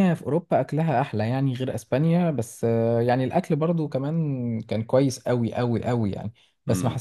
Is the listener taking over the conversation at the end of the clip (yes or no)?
no